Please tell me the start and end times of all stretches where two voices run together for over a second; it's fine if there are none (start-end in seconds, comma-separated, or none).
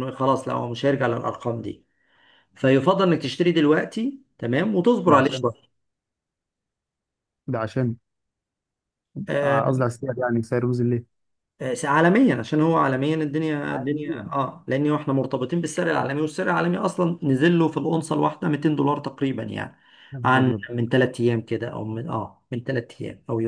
none